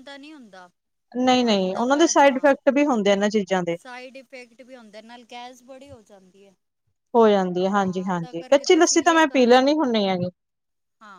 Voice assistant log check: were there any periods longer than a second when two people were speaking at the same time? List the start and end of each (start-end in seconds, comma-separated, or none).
7.8-9.6